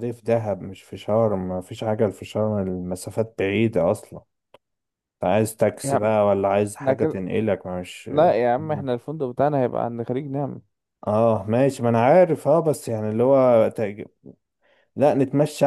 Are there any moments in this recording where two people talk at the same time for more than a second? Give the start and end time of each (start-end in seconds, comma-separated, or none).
none